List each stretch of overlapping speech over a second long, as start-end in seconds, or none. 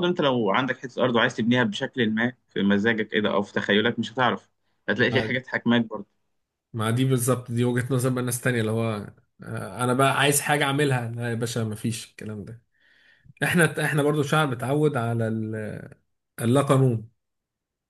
none